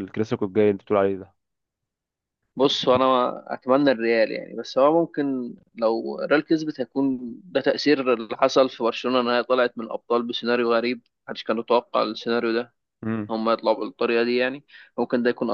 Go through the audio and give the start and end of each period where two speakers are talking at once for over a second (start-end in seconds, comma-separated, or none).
none